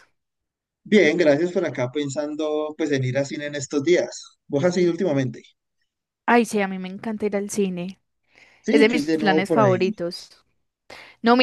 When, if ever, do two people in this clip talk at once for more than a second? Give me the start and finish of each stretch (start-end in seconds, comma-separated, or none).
8.7-9.9